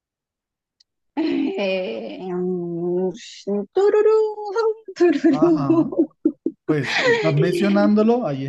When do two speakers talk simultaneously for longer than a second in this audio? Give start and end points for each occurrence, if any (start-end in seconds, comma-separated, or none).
none